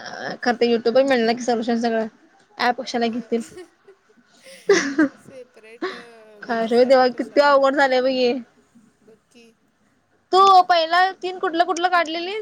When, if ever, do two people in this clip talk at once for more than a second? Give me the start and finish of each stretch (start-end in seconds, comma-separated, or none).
6.5-8.1